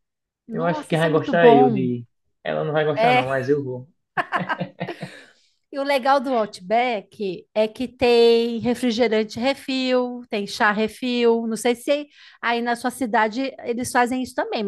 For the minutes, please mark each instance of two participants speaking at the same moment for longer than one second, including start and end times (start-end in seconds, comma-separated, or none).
0.5-1.9